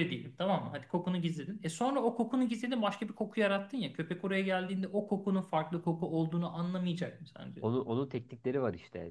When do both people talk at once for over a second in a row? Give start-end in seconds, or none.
none